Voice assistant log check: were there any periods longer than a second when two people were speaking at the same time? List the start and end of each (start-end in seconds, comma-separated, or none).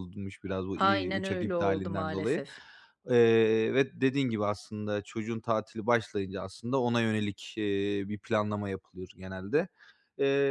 0.8-2.4